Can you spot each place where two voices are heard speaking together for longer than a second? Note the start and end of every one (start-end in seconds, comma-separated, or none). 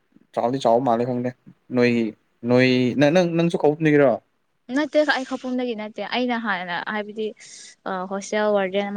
none